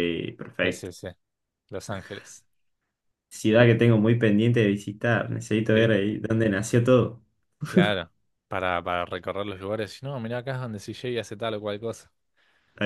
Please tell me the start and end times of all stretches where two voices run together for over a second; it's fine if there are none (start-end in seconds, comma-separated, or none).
none